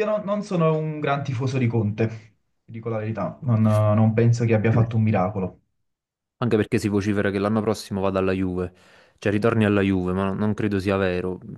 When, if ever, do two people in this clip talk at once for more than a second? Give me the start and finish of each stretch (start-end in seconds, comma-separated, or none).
none